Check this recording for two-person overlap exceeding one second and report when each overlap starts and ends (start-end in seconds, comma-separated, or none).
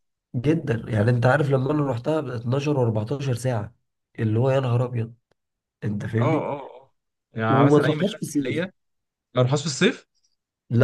7.5-8.7